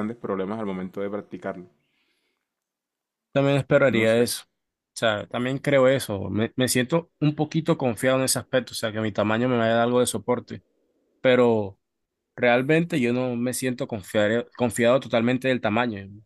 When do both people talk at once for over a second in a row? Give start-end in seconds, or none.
none